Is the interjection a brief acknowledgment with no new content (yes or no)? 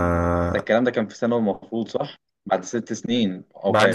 no